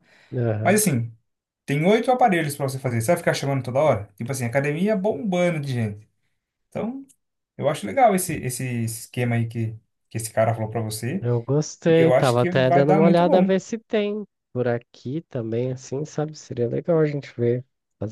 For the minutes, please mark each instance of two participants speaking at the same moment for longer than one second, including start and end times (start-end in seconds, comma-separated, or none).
11.9-13.5